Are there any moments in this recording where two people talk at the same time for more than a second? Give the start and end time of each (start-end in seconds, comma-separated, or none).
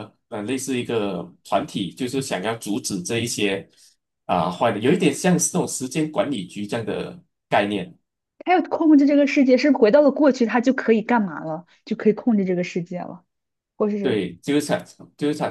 none